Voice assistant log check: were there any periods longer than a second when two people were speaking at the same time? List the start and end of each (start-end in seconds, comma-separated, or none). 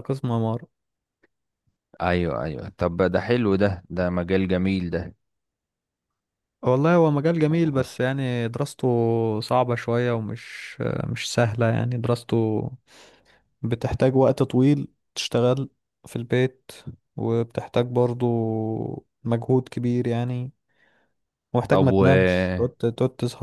none